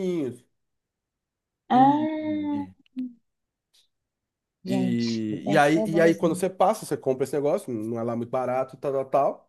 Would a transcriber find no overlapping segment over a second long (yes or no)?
no